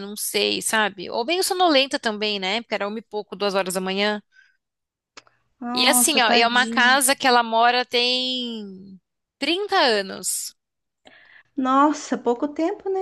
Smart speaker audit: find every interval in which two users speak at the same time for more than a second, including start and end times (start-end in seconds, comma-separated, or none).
5.7-7.0